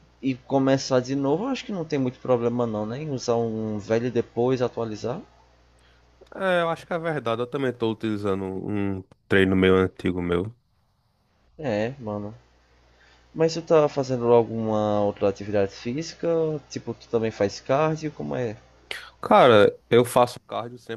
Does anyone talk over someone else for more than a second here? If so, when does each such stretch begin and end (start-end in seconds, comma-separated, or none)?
none